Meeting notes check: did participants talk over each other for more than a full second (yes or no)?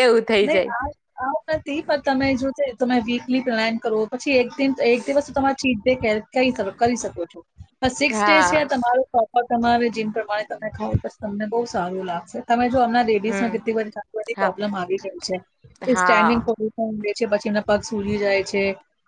no